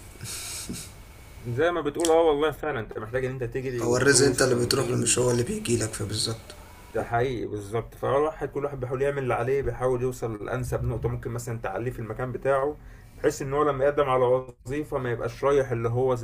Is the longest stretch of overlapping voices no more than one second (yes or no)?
no